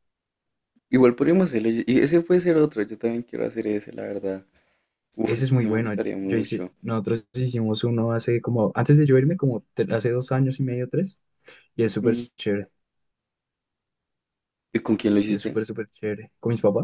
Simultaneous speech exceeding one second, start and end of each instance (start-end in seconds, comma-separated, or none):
5.3-6.7